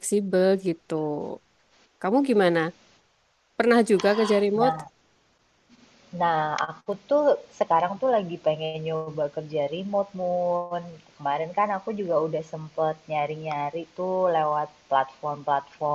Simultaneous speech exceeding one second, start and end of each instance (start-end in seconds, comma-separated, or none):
none